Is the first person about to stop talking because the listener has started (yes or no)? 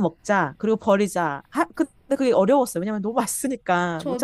yes